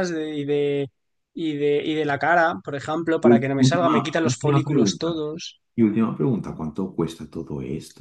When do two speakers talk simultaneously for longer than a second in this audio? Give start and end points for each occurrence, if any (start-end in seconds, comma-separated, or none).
3.2-5.2